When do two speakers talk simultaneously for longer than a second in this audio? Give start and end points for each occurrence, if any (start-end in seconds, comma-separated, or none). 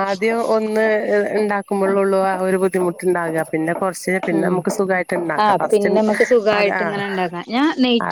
none